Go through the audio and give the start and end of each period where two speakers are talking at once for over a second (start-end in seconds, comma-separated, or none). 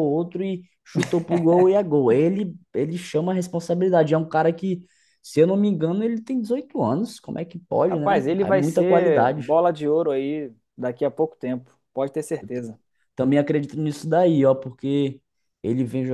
7.9-9.5